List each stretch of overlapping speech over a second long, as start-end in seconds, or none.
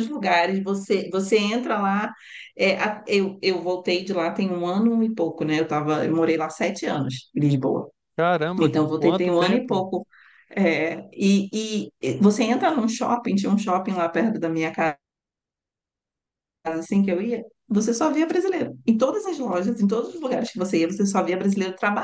8.6-9.9